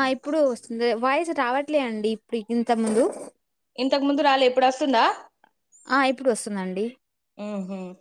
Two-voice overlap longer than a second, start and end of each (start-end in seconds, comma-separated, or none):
none